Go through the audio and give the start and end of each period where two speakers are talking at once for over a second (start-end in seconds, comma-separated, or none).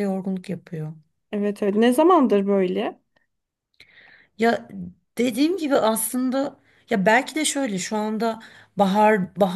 none